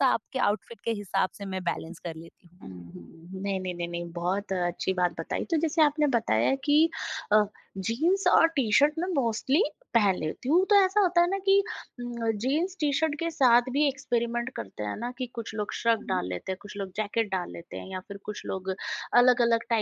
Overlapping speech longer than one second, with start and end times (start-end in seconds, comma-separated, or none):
none